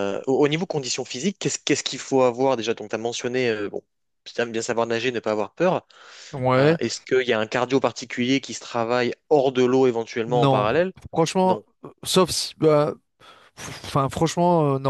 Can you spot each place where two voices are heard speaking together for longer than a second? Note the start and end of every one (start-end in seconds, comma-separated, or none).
none